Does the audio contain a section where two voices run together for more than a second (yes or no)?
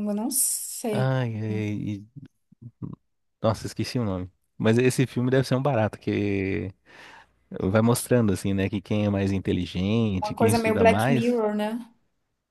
yes